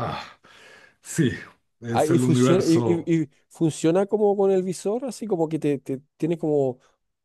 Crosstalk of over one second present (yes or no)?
yes